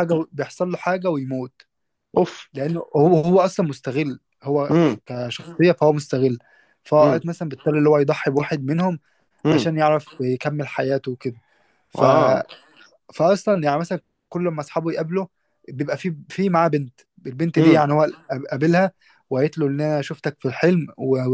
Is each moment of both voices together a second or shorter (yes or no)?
yes